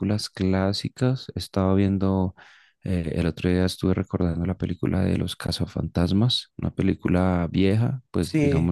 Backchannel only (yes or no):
no